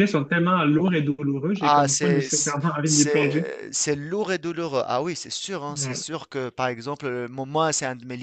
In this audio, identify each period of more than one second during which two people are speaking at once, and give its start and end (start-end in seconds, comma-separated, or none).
1.6-3.5